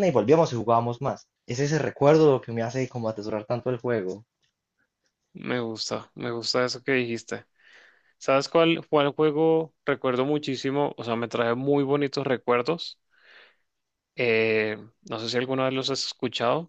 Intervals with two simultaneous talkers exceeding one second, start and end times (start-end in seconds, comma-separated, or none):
none